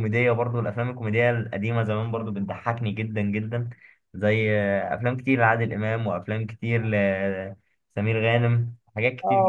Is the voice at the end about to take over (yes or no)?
yes